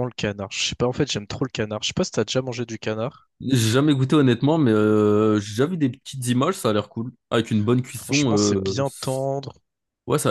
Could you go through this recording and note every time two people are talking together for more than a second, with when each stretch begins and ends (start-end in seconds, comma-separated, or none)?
7.9-9.3